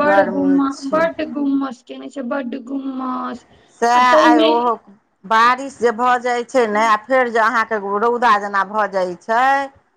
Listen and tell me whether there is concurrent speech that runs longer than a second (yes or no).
no